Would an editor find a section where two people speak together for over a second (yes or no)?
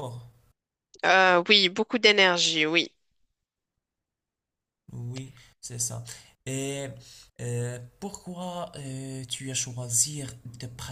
no